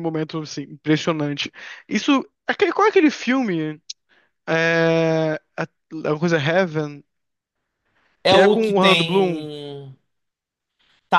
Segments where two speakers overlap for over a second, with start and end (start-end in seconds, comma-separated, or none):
8.3-9.5